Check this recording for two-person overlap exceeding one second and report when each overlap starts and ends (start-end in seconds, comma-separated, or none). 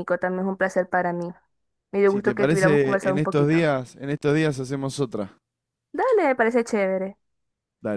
2.1-3.7